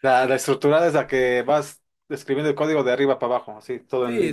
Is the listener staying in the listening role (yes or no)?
no